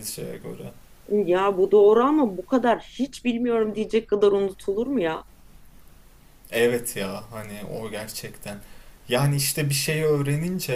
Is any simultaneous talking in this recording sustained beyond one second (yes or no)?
no